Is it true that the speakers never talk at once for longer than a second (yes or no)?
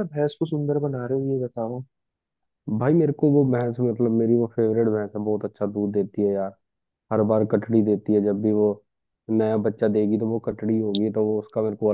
yes